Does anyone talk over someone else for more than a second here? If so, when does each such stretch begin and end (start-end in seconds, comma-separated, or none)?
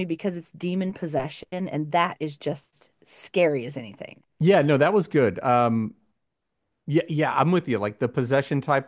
none